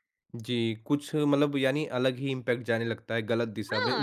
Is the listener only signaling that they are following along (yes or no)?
no